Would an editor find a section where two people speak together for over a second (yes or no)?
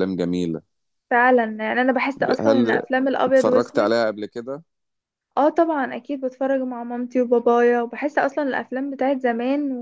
yes